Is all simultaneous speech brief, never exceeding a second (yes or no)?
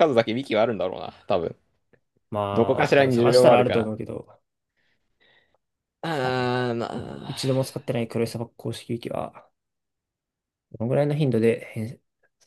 no